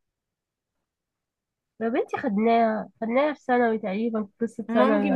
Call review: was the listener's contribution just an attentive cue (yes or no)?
no